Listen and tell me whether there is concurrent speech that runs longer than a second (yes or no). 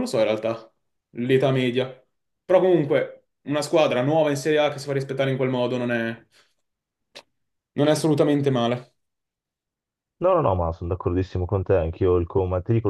no